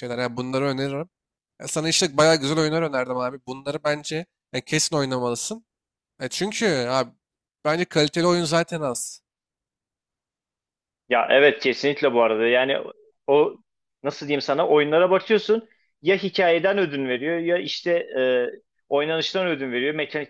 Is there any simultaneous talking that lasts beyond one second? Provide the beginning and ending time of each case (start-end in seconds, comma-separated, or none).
none